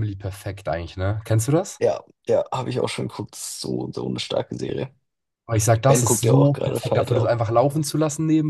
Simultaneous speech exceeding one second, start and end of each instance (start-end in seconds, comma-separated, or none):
5.9-7.3